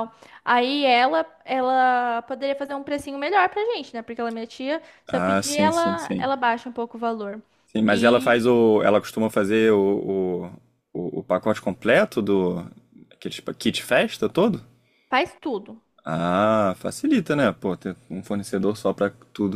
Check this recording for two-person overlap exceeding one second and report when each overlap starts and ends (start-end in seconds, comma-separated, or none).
5.1-6.3